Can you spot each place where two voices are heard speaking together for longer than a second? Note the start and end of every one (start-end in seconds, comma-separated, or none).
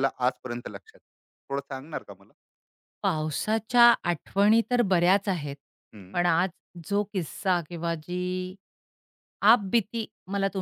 none